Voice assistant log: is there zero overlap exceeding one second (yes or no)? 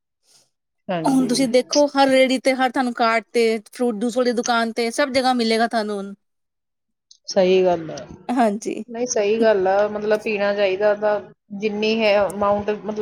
yes